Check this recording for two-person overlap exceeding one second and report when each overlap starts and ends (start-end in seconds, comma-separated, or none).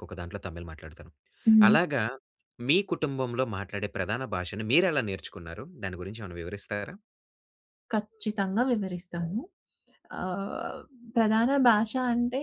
none